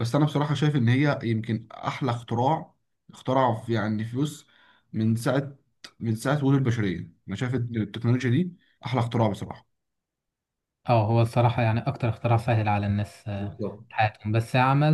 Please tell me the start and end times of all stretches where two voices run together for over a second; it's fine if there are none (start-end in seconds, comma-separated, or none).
none